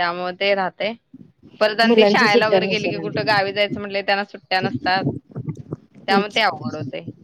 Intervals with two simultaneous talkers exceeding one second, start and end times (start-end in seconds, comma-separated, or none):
1.8-3.3